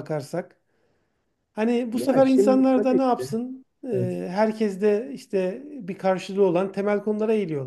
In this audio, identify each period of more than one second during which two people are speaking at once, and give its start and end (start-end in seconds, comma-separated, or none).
1.9-3.3